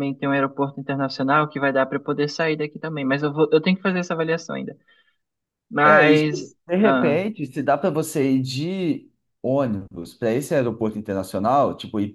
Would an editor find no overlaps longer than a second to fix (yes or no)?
no